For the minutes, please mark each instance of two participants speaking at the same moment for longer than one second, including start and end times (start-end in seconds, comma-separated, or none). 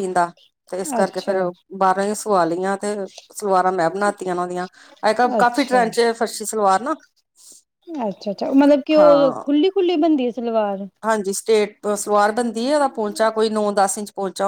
none